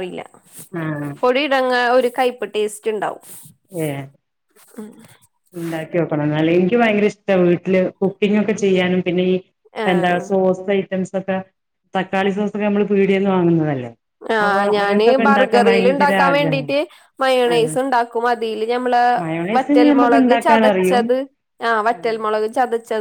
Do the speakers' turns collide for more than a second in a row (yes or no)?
yes